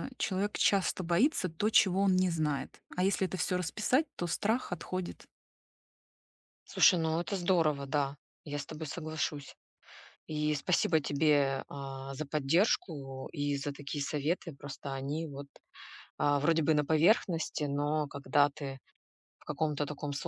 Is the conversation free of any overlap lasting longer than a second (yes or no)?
yes